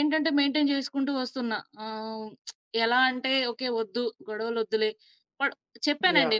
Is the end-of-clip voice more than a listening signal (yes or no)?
no